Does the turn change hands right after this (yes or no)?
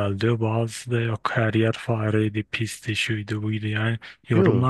no